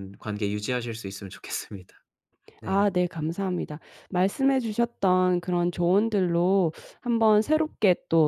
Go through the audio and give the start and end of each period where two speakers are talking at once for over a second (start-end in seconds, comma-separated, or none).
none